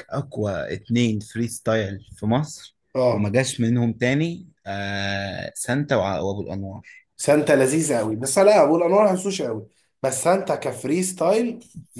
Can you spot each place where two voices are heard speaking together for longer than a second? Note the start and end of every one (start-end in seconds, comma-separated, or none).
none